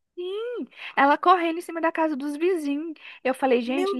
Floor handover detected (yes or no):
no